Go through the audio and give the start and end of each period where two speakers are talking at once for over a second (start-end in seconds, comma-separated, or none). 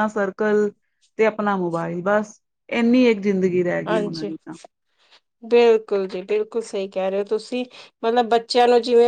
none